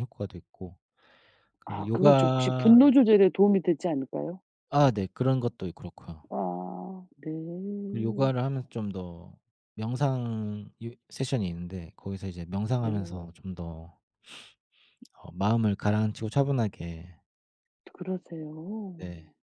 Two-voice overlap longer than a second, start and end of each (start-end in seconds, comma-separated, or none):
1.6-2.9